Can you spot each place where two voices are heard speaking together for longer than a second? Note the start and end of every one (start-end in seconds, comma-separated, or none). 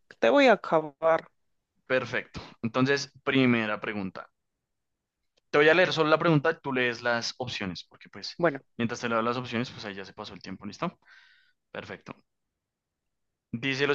none